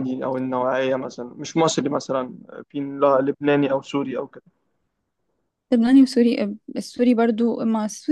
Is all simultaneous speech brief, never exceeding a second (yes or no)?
yes